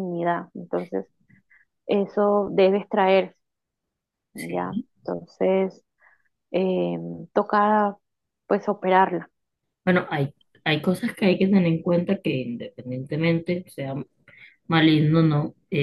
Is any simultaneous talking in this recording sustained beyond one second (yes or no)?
no